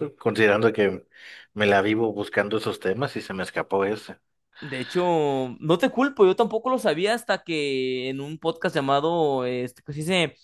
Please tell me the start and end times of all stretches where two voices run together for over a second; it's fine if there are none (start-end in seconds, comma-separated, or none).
none